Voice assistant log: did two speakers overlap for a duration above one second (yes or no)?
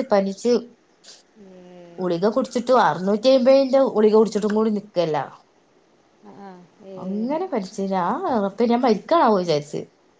no